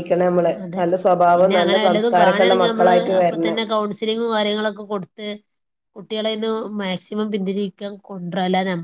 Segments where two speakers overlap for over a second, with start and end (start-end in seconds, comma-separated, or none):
1.9-3.6